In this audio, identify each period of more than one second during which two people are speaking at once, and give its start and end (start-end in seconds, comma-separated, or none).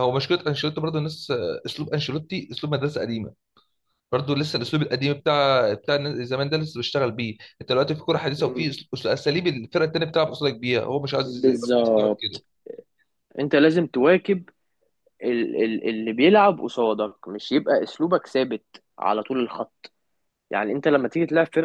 11.2-12.4